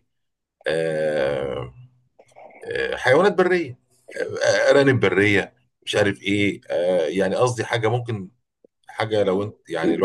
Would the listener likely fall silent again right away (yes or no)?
yes